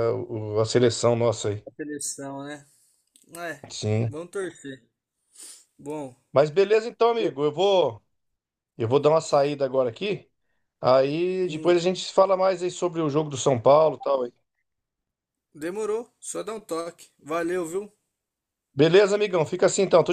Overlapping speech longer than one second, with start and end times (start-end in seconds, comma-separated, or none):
none